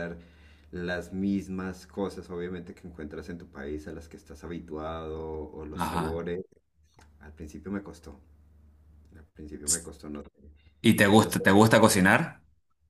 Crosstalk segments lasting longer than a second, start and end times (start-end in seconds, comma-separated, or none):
none